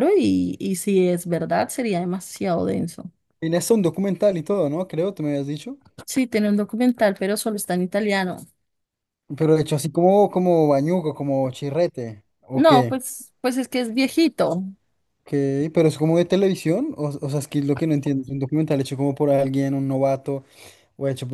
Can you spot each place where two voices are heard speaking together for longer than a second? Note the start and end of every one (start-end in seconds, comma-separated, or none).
none